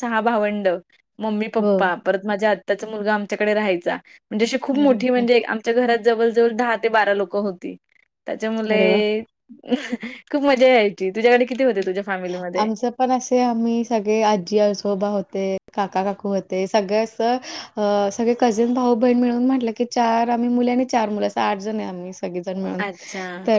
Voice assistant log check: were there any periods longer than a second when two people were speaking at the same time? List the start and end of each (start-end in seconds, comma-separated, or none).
none